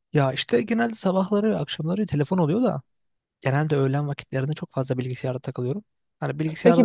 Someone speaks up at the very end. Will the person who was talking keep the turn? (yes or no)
yes